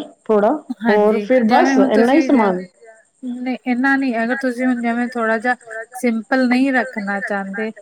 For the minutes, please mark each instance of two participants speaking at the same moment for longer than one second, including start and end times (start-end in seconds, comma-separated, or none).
none